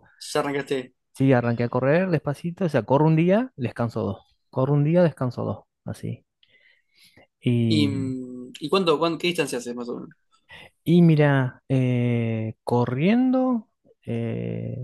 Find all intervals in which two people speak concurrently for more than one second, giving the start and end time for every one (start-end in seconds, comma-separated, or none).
none